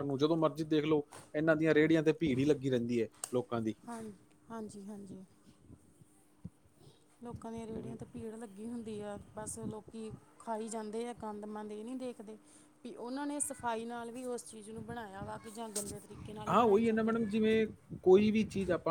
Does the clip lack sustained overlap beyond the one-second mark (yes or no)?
yes